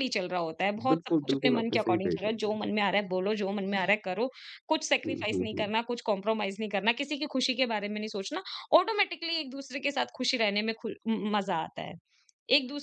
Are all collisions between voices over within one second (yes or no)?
no